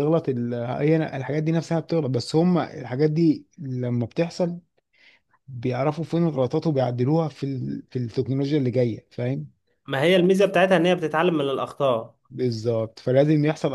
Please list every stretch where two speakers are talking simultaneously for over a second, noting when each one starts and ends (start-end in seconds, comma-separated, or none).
none